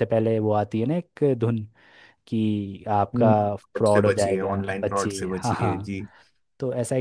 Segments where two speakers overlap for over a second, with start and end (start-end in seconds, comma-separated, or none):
3.2-5.9